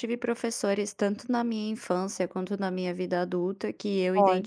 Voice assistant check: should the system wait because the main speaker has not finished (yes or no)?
yes